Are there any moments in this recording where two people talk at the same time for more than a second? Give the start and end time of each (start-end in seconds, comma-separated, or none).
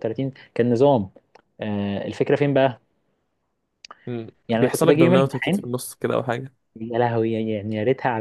4.5-5.7